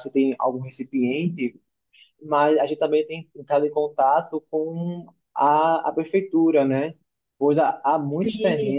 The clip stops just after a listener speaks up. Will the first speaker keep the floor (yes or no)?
yes